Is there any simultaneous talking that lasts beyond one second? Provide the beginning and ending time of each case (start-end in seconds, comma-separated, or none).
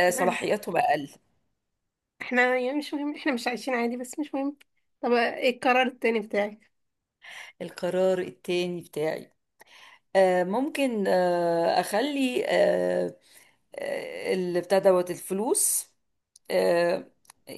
none